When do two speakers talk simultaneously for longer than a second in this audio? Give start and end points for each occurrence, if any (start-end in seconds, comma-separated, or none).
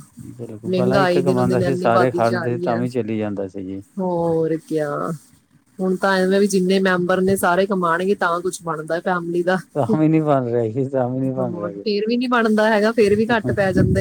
0.7-2.8